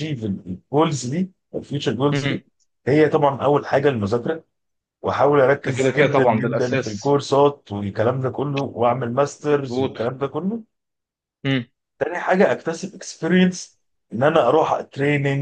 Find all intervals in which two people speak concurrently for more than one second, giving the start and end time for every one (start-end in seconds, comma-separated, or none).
5.6-7.2